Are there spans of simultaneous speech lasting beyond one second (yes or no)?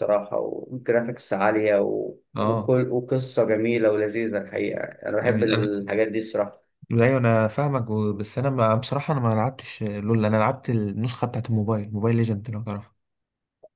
no